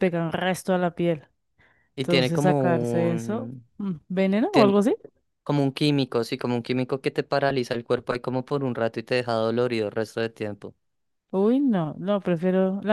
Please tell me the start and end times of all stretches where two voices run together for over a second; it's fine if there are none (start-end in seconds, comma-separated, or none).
2.0-3.7